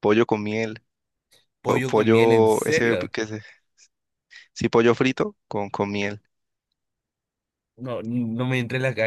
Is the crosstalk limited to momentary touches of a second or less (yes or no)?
no